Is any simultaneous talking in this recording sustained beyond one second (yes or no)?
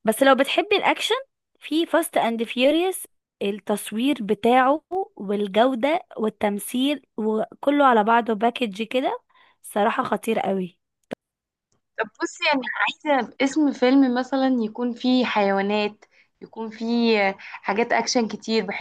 no